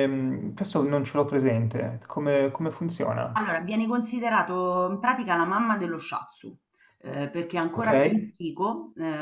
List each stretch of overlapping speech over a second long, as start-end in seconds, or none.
none